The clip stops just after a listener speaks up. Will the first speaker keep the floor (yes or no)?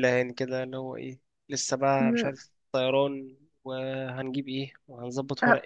no